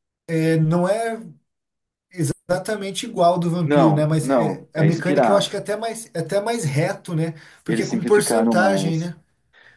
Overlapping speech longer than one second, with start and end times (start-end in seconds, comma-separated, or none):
3.6-5.5, 7.7-9.1